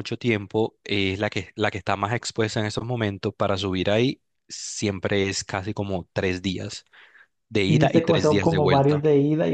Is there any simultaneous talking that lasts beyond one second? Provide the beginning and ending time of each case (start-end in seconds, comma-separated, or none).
7.6-9.0